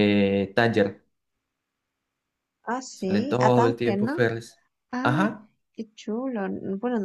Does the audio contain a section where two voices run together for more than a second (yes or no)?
yes